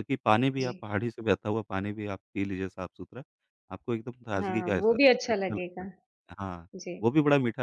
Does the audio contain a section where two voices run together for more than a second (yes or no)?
yes